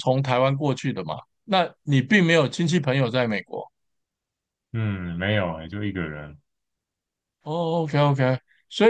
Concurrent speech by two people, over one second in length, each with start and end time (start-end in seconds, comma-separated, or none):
none